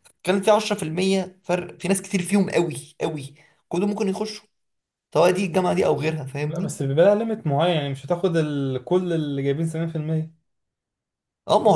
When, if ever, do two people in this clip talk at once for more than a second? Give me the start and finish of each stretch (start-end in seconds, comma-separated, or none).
none